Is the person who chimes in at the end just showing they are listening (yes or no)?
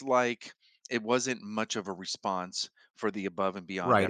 no